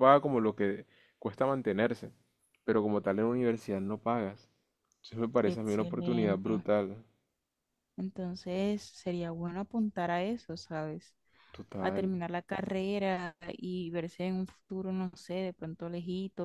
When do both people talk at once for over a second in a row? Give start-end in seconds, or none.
5.5-6.7